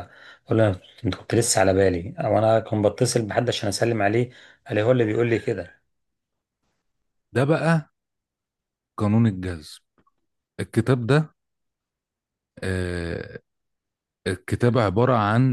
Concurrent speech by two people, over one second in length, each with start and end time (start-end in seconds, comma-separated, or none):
none